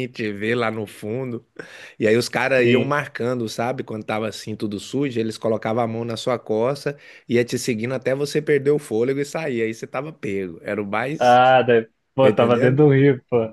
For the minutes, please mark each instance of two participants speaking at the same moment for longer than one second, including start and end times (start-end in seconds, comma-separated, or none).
none